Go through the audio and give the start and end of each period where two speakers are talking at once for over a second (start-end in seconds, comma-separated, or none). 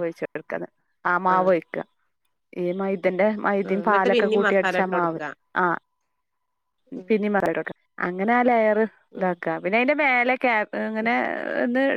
3.7-5.2